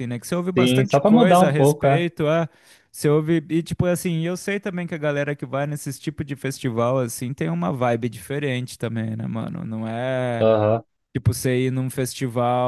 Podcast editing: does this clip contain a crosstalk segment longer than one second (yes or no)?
yes